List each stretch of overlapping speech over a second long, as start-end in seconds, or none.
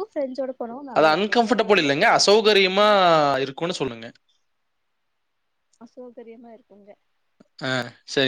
1.0-2.9